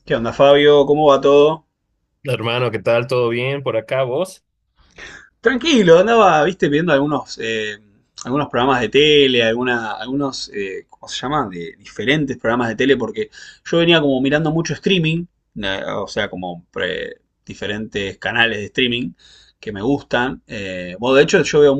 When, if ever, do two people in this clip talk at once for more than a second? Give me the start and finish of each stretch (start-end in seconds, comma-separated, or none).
none